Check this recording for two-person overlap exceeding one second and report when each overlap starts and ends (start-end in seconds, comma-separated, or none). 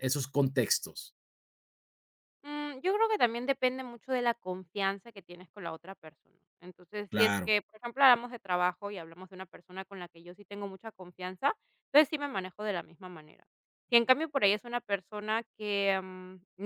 none